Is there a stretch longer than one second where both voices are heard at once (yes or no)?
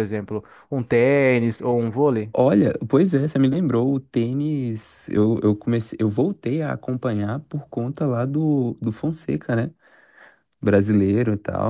no